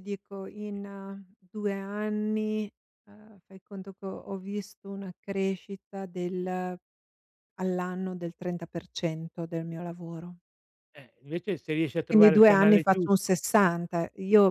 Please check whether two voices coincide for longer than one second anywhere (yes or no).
yes